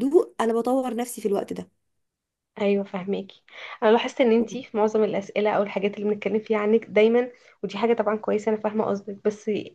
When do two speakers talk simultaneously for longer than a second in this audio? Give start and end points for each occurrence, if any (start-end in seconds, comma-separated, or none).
none